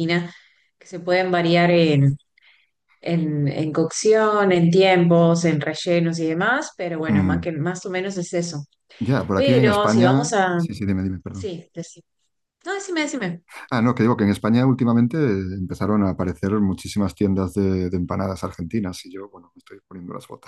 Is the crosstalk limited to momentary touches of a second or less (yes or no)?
no